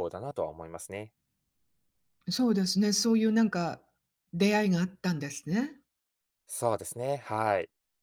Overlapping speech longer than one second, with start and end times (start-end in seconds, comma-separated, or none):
none